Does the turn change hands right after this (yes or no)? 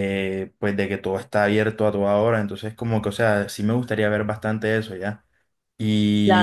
no